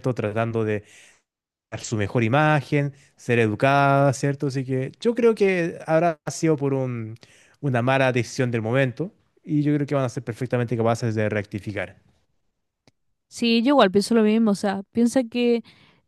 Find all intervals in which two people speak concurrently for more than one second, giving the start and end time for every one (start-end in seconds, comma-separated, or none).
none